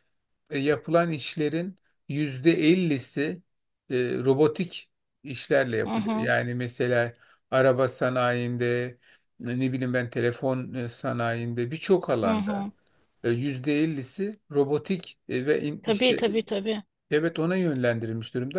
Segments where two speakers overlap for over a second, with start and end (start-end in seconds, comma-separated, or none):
none